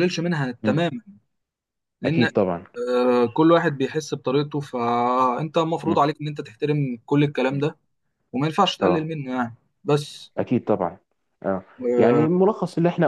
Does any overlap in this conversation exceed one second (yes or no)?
no